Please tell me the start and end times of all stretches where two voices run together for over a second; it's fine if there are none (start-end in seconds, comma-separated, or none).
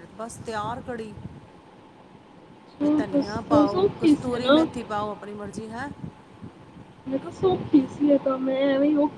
3.0-4.6